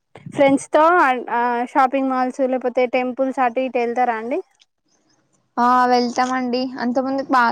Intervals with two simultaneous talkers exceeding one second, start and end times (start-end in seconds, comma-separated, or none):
none